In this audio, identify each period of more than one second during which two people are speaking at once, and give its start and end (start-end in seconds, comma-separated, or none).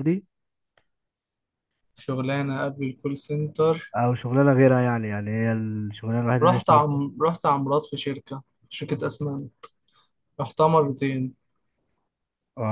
none